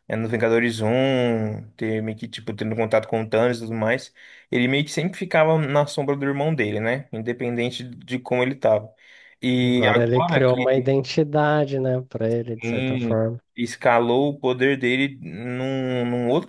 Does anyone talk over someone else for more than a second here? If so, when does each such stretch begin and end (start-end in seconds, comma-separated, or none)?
9.6-10.9